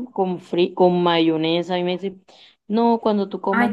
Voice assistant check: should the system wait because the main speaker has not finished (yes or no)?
no